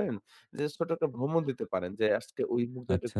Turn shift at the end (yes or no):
no